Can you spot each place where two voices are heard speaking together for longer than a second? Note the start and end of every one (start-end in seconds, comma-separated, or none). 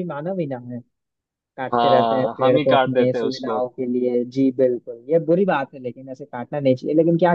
1.7-3.6